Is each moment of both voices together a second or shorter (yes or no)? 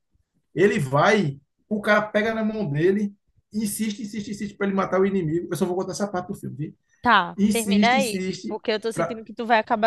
no